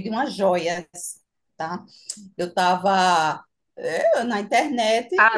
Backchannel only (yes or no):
no